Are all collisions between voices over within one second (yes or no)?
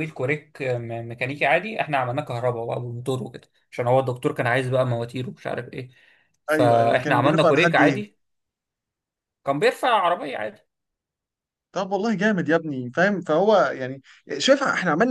no